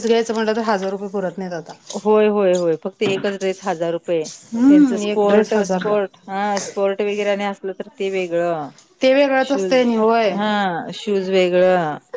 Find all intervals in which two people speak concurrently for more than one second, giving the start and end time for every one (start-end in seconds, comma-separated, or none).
4.7-5.9